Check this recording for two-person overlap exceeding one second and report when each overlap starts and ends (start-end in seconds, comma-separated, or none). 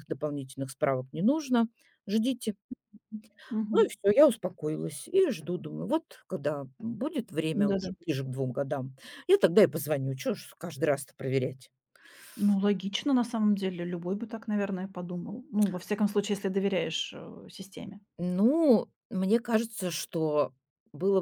none